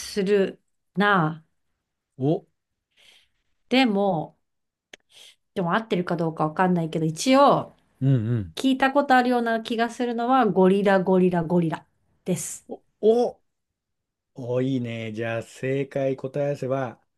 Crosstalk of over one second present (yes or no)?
no